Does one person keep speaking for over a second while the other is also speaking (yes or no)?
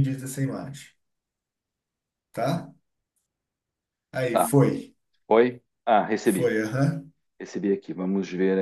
no